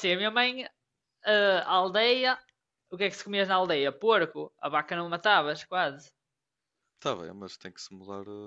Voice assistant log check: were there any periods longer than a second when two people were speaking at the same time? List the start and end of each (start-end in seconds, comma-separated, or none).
none